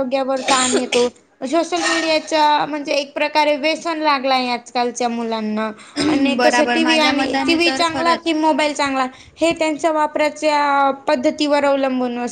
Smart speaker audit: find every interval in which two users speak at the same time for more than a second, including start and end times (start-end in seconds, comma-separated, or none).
6.4-8.3